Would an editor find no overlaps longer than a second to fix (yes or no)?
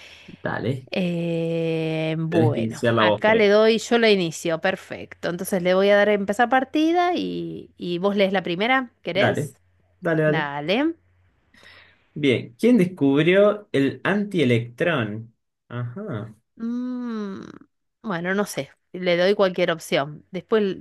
no